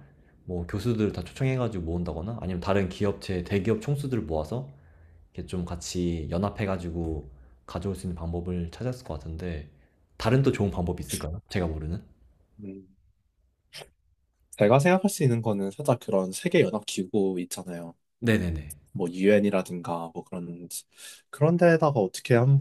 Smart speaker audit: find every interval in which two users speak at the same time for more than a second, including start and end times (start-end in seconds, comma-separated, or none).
none